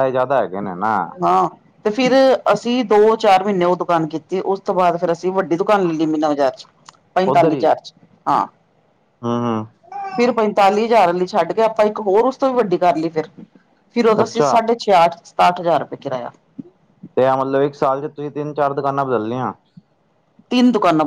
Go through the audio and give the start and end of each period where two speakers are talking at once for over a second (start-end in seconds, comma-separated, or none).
none